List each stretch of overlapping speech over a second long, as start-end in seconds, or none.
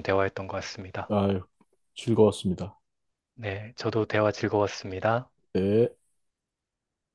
none